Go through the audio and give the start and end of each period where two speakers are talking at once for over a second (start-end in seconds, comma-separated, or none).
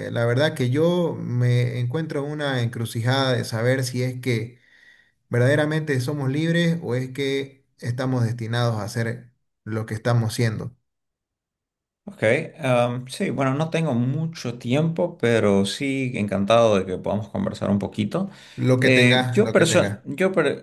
18.8-20.0